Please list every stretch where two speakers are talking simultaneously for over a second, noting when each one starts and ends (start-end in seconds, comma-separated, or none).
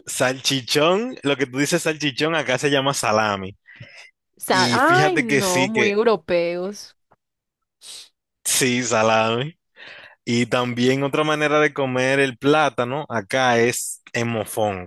4.5-5.9